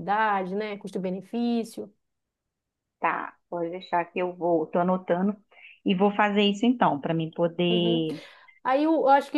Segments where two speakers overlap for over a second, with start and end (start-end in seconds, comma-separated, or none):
none